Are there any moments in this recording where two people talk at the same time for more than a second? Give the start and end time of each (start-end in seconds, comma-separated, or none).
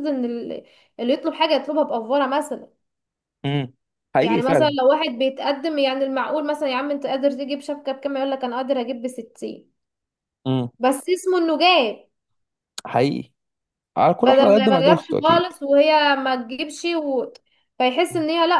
14.2-15.5